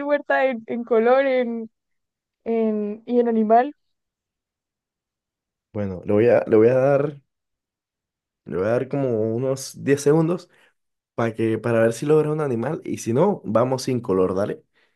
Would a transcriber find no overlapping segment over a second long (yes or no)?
yes